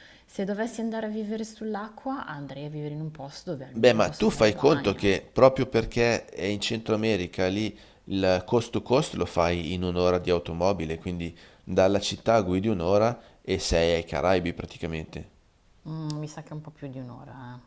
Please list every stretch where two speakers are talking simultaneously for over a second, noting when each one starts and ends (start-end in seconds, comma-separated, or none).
3.7-5.2